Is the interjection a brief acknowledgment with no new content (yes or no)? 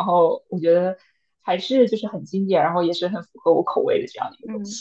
no